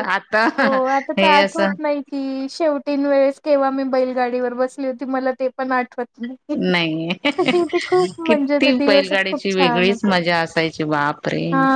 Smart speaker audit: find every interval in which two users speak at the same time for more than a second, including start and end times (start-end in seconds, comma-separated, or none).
8.2-10.1